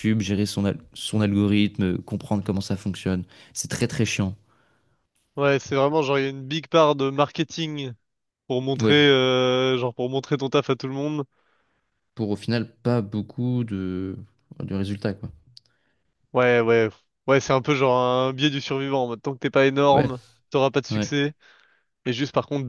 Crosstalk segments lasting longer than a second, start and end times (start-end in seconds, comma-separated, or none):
none